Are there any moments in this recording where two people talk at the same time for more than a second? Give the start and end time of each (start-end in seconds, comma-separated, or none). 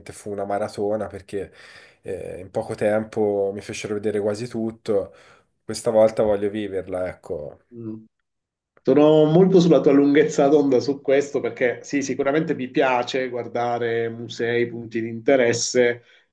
none